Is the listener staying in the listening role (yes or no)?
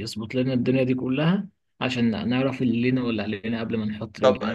no